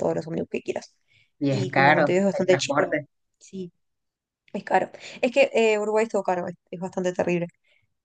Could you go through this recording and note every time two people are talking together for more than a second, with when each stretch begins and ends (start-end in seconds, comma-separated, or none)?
1.5-3.0